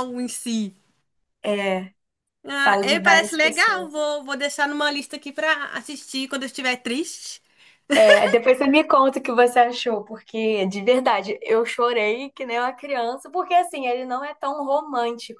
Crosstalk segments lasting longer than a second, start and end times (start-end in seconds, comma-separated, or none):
2.6-4.0